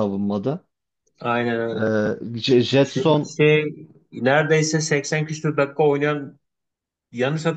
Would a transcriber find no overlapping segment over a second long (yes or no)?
yes